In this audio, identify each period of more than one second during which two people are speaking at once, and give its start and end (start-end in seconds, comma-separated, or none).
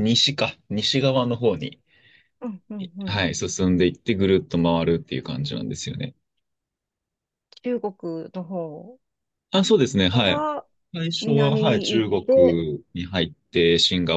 11.2-12.6